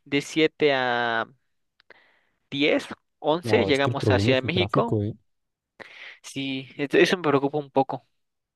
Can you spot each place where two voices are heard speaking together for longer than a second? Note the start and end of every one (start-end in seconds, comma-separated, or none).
3.4-5.0